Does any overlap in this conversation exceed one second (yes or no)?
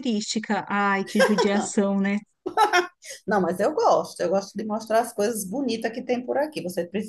no